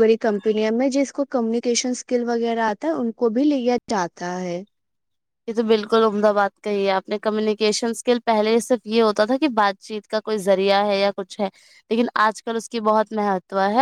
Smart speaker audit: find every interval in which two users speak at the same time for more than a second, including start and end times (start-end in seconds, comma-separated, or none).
none